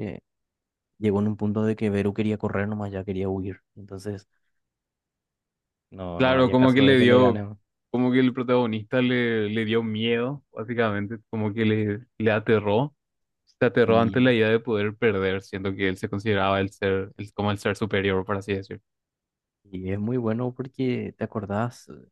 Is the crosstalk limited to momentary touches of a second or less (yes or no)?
no